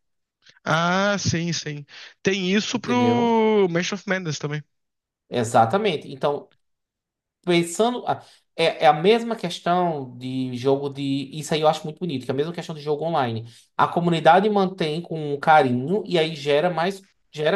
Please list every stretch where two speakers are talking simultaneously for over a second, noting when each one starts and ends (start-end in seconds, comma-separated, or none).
none